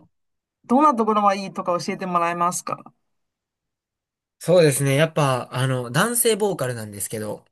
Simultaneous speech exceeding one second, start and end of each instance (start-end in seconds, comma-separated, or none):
none